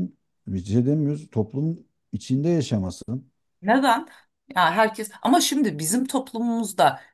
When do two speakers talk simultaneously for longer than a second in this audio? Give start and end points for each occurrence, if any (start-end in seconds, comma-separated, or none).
none